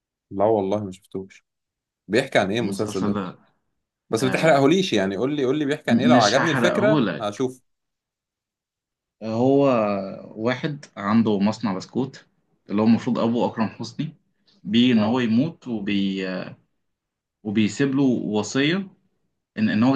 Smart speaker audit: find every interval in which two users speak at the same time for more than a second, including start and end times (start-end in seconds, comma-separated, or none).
5.9-7.5